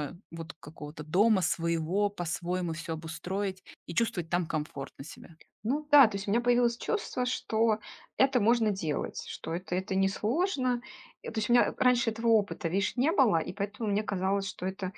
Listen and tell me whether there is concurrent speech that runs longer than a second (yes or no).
no